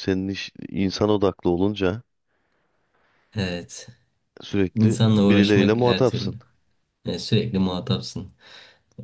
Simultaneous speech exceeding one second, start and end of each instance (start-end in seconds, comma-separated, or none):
4.8-6.3